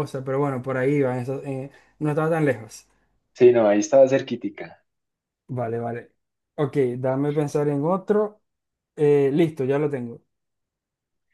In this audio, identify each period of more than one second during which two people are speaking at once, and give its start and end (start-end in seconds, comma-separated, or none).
none